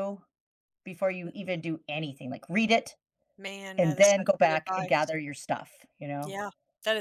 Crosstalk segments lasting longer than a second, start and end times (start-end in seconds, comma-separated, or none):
3.8-5.1